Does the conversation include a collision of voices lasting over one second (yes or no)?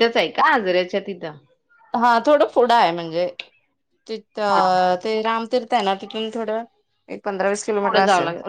no